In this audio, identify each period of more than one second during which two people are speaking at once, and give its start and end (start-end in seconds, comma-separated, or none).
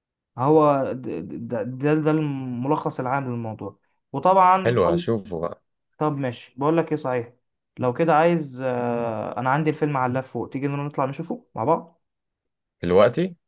none